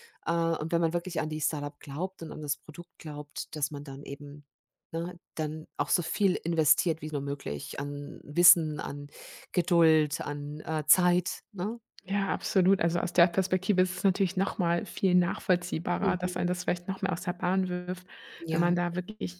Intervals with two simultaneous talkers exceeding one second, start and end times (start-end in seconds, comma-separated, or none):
none